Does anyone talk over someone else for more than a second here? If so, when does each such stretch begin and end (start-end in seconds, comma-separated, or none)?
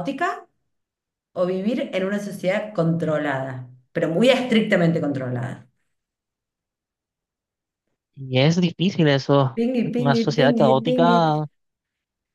9.6-11.4